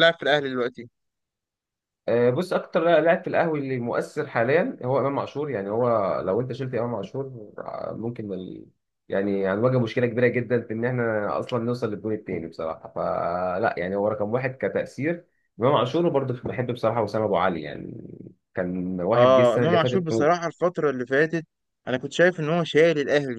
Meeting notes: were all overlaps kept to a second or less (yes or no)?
no